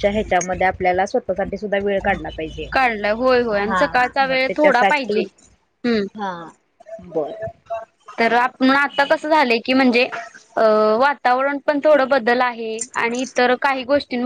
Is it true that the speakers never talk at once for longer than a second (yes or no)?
no